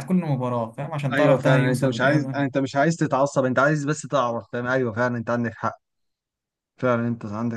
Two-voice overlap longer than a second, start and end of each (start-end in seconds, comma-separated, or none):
1.1-2.4